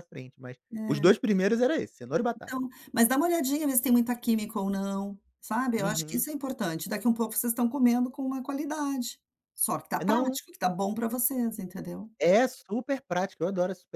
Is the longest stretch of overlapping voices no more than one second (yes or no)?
yes